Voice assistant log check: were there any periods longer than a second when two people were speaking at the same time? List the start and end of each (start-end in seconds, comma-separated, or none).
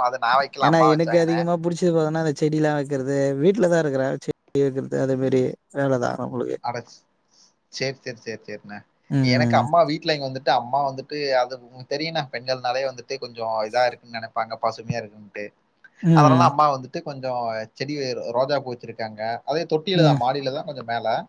none